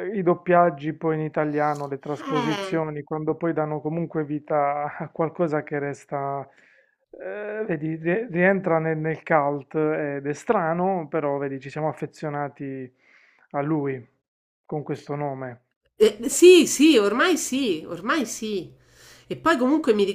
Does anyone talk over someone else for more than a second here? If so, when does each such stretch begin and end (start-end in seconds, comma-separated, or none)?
none